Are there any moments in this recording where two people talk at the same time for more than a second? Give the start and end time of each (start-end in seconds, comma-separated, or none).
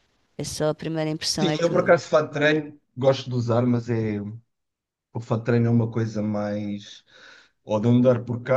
none